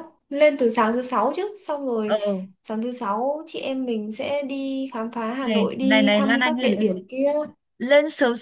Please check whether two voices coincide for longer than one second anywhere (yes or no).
yes